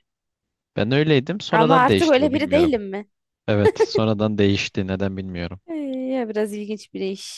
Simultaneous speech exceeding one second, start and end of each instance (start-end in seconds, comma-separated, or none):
1.5-2.7